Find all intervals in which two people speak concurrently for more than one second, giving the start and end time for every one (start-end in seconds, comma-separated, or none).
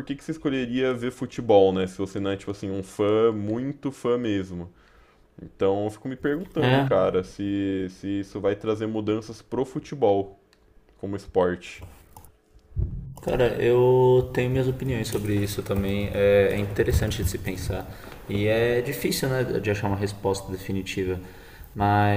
none